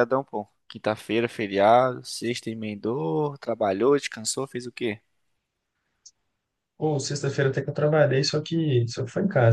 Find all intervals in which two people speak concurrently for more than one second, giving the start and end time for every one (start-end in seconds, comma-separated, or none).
none